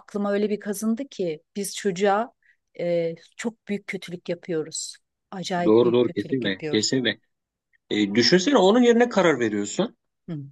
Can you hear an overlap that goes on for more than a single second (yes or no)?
yes